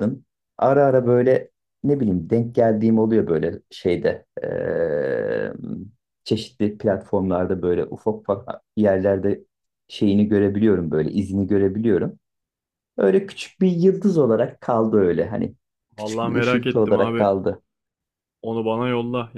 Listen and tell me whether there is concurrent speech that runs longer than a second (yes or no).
yes